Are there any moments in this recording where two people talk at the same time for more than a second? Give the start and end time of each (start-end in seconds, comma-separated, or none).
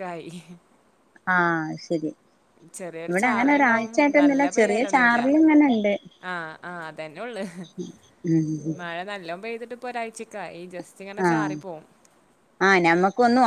3.1-5.3